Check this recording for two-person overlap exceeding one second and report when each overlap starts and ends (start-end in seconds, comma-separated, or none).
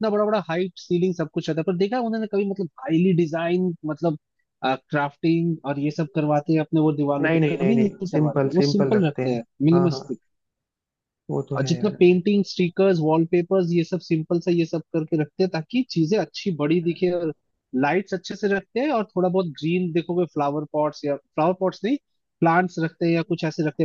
7.2-10.0